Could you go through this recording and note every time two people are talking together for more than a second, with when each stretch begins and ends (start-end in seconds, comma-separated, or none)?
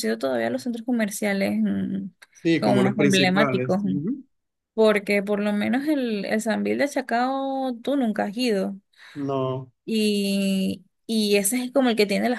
2.6-4.0